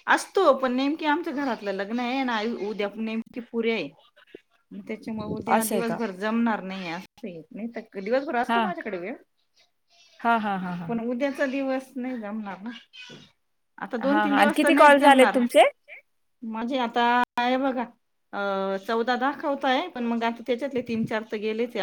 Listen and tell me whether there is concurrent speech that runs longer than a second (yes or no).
yes